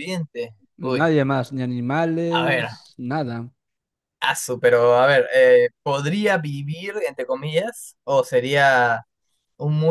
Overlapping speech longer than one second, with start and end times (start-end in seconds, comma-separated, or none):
none